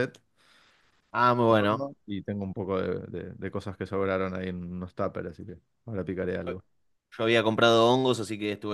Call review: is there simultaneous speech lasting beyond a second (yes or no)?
no